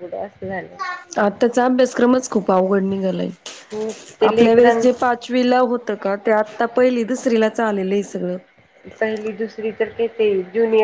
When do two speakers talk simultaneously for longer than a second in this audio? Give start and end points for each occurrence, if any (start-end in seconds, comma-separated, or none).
none